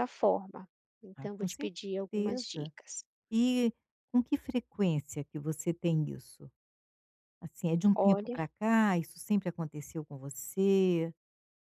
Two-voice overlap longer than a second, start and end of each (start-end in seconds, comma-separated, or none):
1.1-2.7